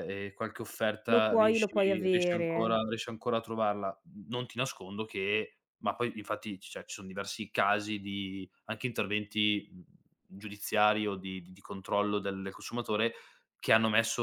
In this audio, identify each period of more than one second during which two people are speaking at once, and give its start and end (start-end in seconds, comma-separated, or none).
1.1-2.8